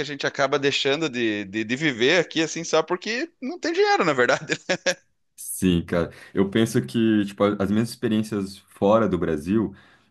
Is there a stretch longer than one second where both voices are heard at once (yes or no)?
no